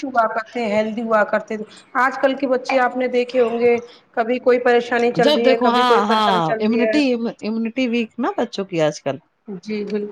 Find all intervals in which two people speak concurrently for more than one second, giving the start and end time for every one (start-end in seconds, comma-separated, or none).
5.2-7.0